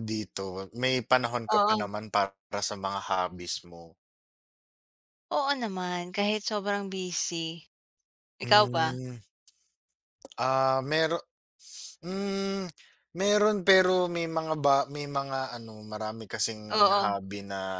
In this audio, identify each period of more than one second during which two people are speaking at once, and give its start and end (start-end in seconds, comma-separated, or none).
none